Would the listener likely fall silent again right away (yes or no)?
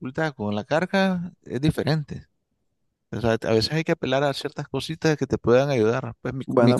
no